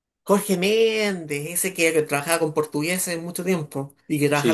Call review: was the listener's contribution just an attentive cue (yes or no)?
no